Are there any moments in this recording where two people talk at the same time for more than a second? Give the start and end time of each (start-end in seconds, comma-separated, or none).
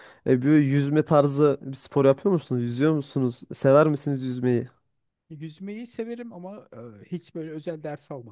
none